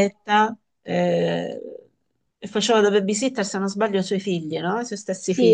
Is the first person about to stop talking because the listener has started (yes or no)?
yes